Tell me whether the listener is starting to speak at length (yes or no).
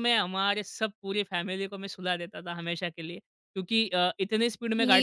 yes